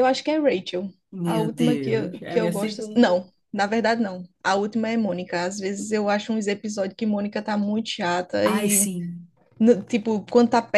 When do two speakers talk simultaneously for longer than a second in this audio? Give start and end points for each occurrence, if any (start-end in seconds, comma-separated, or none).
1.2-3.2